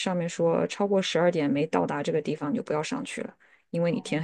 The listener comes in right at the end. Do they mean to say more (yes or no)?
yes